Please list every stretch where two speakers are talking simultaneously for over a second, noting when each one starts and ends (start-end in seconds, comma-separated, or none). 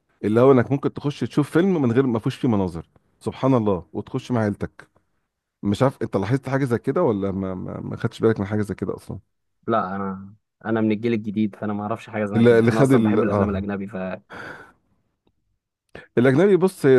12.3-13.7